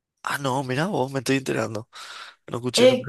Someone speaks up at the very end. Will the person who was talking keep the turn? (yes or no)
no